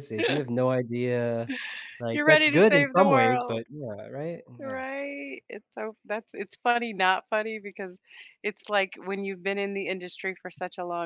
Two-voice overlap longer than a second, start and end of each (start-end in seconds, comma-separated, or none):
2.1-3.6